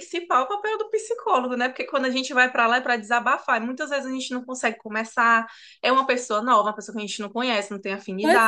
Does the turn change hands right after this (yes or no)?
yes